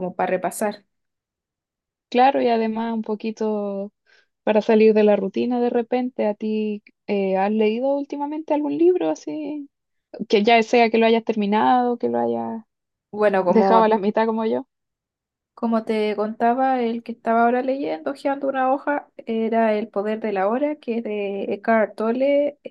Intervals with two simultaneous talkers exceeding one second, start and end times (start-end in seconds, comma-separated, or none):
none